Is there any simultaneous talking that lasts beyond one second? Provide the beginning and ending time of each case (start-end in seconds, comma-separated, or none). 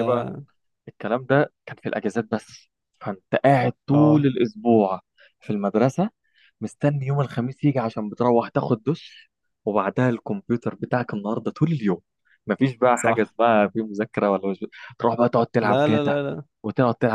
none